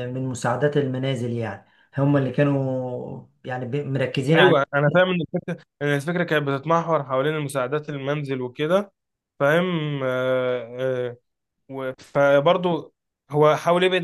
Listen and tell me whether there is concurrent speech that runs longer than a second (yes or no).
no